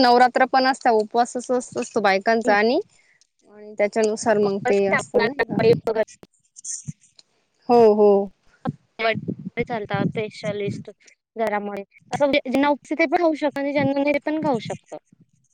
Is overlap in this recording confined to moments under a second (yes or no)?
yes